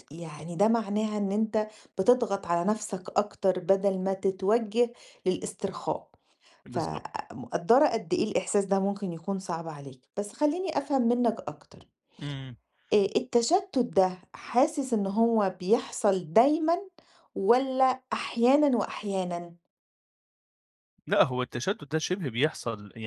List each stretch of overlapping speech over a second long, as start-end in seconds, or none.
none